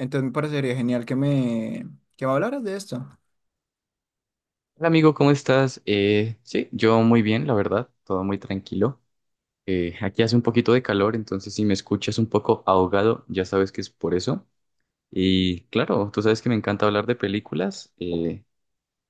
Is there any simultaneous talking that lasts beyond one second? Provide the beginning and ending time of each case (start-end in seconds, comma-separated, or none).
none